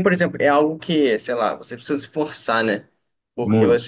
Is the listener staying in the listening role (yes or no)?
yes